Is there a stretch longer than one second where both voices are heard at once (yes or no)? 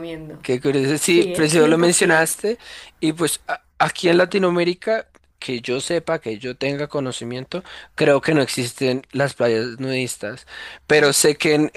yes